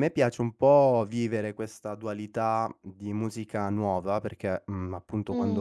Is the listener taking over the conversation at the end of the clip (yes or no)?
no